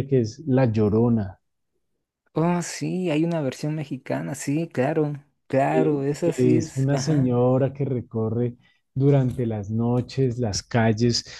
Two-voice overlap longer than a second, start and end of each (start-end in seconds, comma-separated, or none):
5.7-7.3